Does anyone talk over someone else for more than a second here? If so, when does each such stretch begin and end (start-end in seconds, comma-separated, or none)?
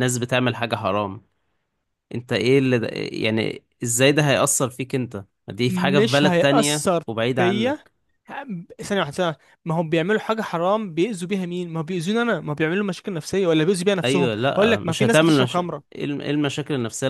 5.7-7.9, 14.0-16.0